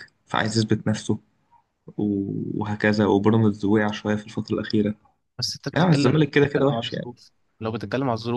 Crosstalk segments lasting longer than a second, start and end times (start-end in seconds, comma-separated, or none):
5.7-7.1